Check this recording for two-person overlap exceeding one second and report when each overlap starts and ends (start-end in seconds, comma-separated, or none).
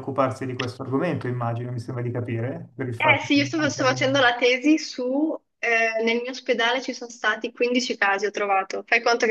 3.0-4.3